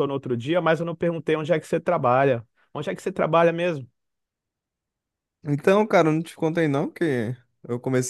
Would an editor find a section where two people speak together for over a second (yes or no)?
no